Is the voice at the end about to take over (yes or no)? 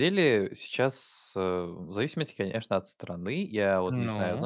no